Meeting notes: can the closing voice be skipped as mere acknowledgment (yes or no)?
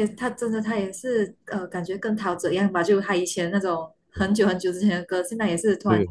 yes